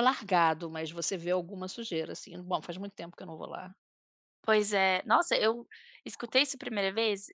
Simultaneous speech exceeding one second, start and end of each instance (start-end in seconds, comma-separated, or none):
none